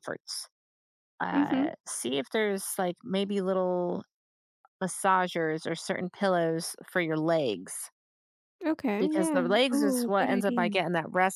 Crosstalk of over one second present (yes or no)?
yes